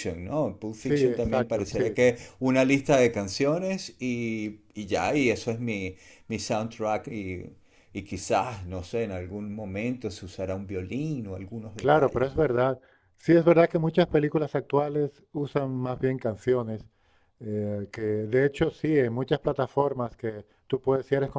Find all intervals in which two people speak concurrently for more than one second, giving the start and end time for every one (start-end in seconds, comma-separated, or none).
0.8-2.0